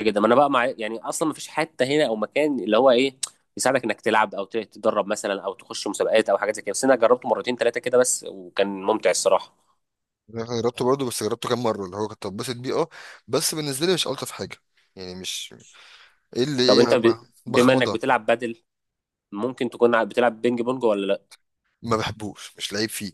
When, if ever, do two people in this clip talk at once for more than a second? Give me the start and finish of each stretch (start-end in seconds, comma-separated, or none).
16.6-18.0